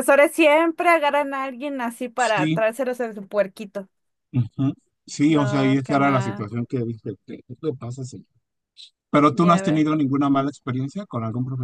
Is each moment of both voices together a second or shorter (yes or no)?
no